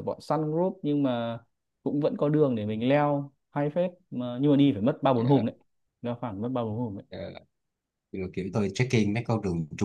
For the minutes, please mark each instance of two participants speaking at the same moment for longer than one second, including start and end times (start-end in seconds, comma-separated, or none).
none